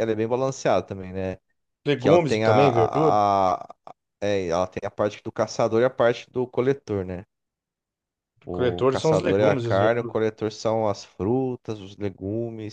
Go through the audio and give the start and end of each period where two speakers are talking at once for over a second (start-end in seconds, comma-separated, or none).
2.0-3.2, 8.5-10.2